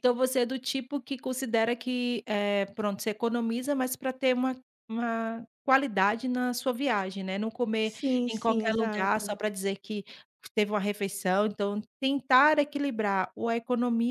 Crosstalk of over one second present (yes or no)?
yes